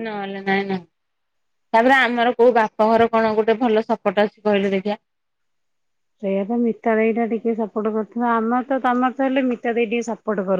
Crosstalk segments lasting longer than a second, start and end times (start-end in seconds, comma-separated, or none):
none